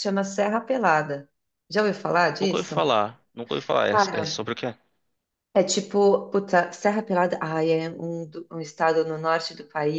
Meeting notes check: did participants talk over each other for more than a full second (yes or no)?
no